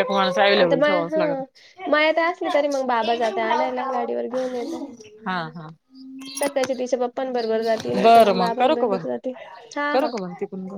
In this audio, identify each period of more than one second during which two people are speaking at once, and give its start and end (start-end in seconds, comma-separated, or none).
3.0-4.8